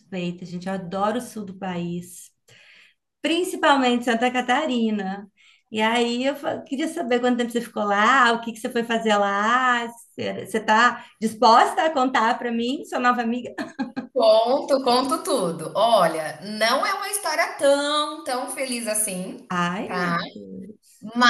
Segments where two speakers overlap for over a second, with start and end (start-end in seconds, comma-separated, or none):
none